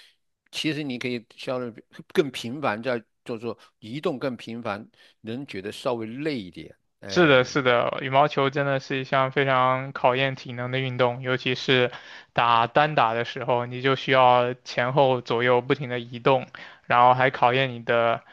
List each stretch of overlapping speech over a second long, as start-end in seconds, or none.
none